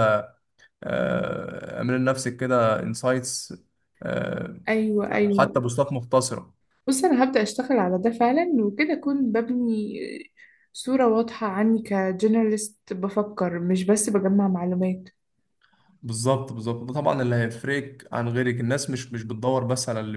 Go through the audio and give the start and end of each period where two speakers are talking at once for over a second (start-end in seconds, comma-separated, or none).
none